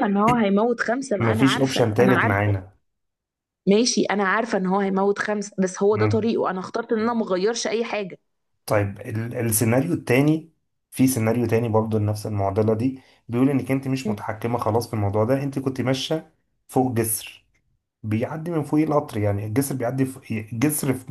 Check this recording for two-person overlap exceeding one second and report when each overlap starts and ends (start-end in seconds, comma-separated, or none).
1.2-2.6